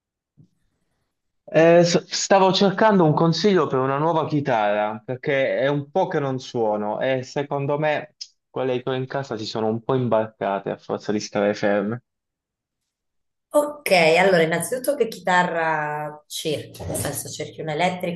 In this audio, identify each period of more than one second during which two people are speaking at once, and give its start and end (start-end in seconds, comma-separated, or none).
none